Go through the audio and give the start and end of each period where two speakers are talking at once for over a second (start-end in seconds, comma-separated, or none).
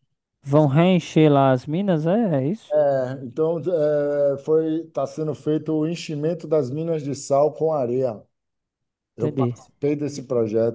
none